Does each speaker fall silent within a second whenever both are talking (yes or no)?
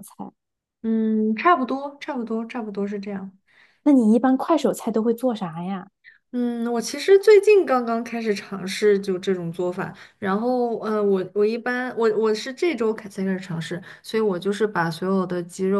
yes